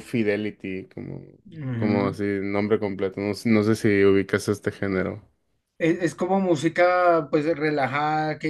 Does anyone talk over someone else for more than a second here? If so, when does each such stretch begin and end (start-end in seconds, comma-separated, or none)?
none